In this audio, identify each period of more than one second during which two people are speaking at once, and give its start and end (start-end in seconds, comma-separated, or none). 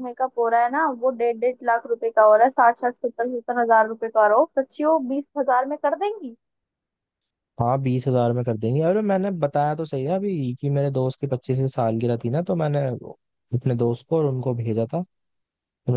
none